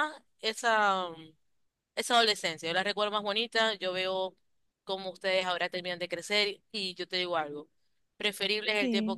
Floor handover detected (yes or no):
no